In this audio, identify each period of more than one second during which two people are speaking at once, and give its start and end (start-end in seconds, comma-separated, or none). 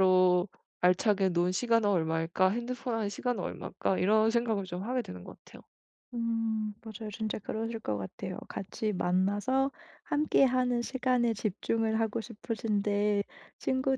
none